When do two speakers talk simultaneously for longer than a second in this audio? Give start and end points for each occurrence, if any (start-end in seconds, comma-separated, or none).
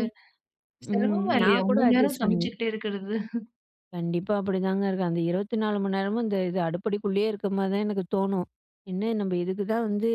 0.9-2.5